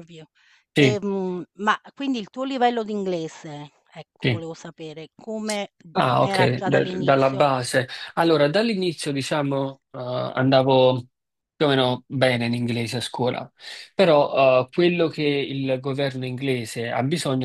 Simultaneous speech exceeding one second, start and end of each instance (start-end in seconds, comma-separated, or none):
6.2-7.5